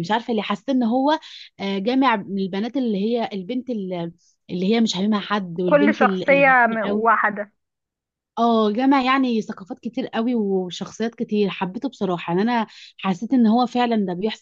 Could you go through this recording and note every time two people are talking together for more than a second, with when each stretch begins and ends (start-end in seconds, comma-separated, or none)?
5.6-7.1